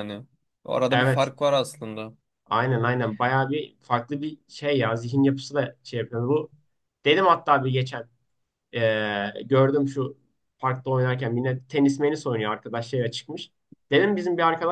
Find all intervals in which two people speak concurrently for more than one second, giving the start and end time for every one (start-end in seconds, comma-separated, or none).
none